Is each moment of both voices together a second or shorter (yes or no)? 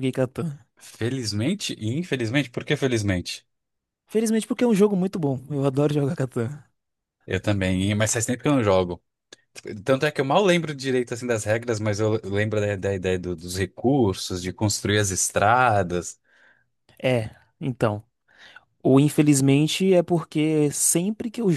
yes